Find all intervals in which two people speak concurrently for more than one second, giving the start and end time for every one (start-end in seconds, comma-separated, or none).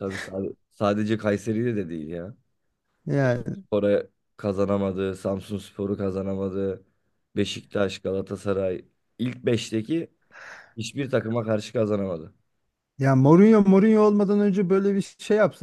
none